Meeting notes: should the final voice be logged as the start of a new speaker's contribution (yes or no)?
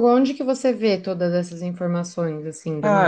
yes